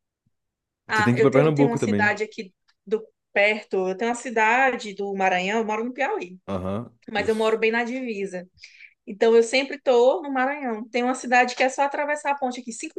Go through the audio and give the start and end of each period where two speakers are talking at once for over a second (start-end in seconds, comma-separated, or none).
0.9-2.2